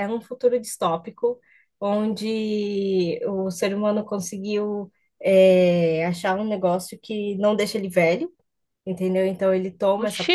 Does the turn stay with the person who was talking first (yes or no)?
yes